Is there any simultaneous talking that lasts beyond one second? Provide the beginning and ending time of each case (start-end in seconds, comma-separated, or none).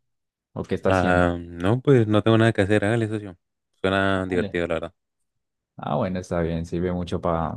none